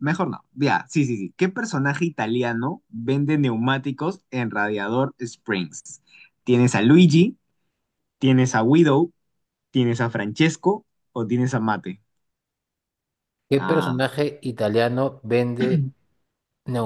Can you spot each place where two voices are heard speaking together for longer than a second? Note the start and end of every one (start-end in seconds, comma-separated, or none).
none